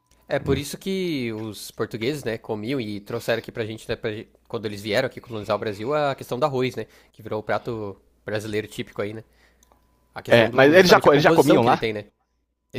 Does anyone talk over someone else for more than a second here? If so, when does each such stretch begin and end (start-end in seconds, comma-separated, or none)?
10.3-11.8